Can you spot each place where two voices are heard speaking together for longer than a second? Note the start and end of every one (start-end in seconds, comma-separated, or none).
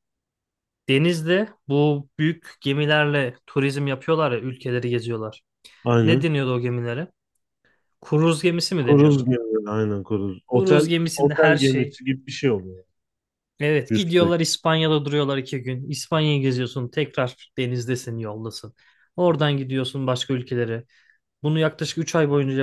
10.5-12.0